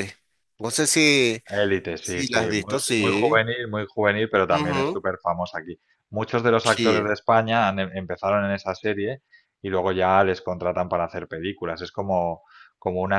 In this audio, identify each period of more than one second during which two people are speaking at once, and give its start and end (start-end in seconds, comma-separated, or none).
2.0-3.4